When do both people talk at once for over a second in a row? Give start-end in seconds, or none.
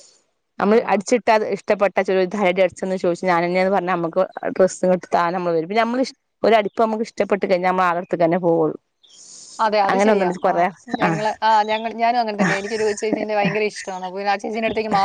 none